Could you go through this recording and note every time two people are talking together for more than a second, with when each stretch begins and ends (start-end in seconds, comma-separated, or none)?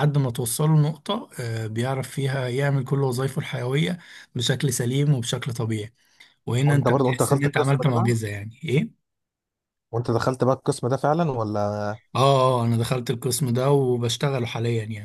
6.7-8.1